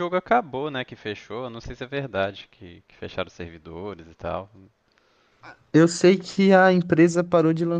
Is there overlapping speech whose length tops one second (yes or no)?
no